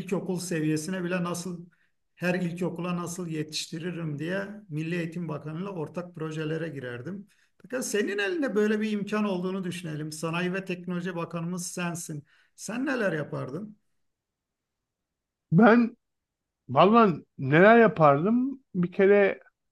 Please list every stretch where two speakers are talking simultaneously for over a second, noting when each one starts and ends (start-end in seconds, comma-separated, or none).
none